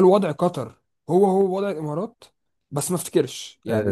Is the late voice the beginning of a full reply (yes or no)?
yes